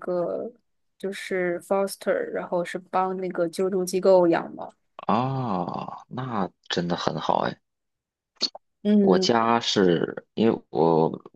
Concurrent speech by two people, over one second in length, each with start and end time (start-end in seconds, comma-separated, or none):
none